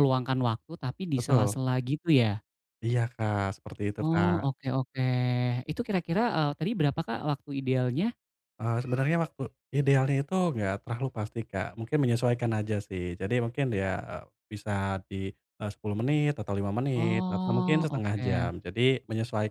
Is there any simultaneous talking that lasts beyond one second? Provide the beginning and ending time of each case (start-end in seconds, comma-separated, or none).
16.9-18.5